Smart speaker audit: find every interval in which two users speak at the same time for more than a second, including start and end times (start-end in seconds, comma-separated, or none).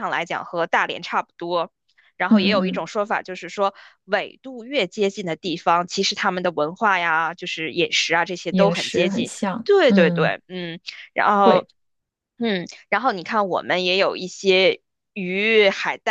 8.5-10.3